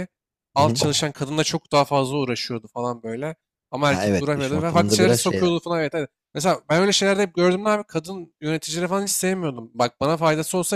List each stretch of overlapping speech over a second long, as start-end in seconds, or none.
3.9-5.6